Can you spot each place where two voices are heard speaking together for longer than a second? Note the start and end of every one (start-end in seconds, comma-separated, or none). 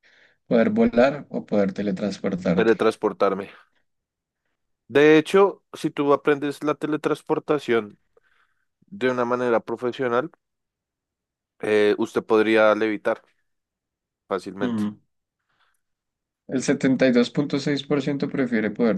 none